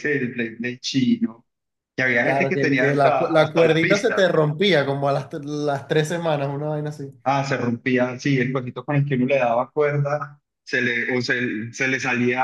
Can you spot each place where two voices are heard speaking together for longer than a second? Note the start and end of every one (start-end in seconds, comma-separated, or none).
2.2-4.3